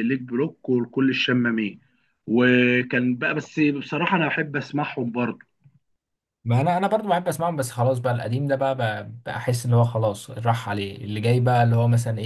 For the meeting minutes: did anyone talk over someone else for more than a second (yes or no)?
no